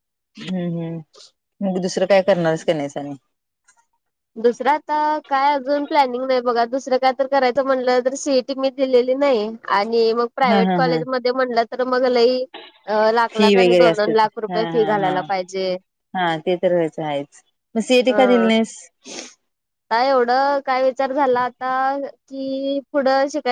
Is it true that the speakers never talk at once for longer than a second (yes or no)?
no